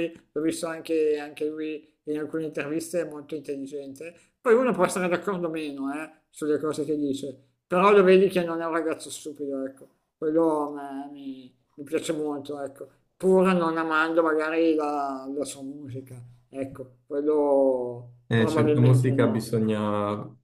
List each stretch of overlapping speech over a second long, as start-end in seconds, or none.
18.3-19.5